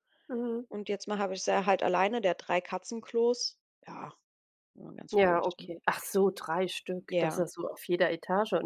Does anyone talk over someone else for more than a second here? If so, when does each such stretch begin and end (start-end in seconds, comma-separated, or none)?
none